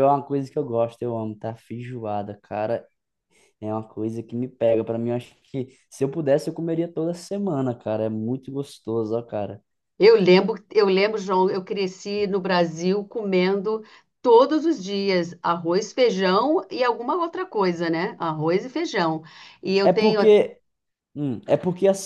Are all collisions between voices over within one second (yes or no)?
yes